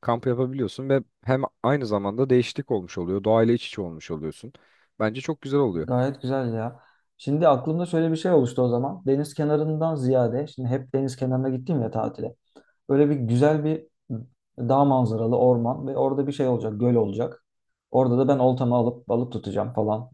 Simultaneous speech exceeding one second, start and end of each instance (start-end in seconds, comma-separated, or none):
none